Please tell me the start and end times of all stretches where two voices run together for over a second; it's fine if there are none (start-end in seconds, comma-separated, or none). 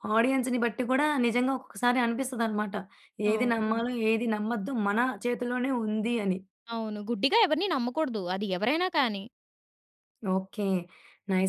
none